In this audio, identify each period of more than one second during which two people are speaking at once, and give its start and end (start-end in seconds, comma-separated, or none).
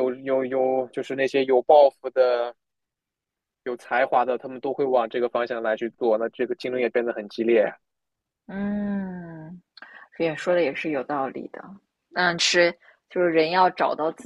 none